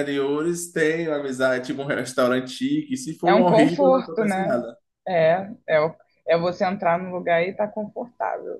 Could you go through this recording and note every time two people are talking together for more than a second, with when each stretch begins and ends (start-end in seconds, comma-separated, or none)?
3.2-4.6